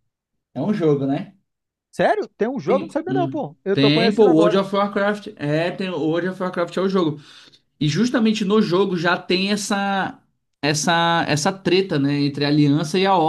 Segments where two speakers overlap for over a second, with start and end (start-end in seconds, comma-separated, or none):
2.7-4.6